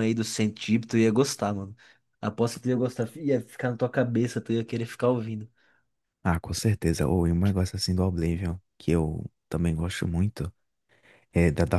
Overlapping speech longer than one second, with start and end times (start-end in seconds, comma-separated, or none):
none